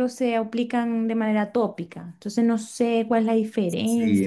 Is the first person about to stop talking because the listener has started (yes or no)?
yes